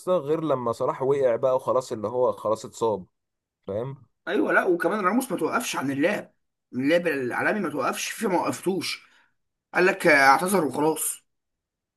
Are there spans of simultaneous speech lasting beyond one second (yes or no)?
no